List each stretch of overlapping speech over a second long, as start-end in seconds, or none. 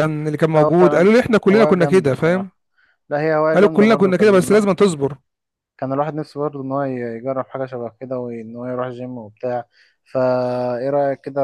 0.5-2.5, 3.5-4.8